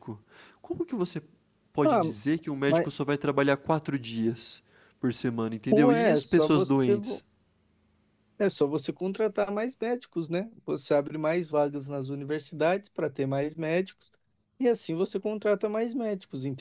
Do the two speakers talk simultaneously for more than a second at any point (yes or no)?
yes